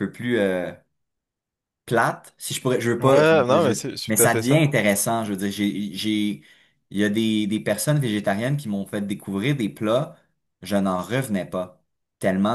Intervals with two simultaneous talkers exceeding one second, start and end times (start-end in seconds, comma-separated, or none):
3.0-4.6